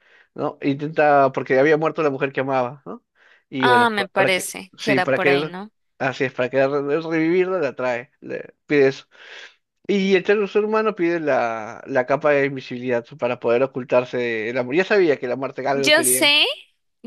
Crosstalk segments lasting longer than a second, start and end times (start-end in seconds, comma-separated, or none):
3.6-5.5